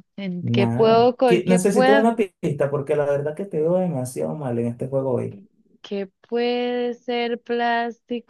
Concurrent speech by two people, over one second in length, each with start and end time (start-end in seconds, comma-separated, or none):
0.6-2.1